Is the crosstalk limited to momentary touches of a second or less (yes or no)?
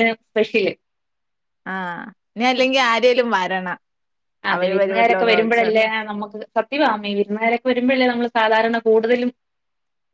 no